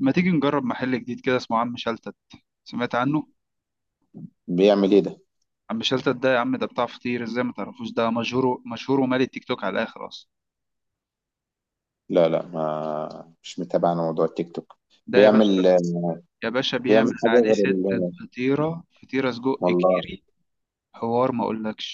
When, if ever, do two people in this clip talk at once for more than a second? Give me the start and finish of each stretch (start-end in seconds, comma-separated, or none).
16.9-18.1